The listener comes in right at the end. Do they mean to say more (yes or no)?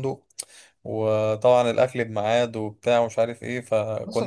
yes